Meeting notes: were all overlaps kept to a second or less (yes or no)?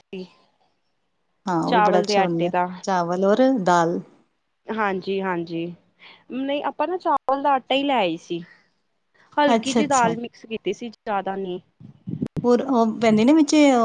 yes